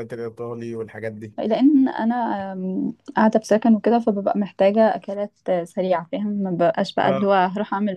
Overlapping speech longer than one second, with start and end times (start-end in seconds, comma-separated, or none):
none